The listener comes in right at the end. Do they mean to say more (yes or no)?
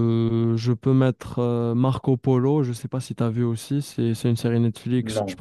no